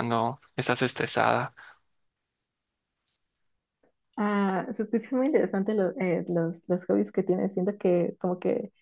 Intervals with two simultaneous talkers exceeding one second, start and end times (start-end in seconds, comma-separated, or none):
none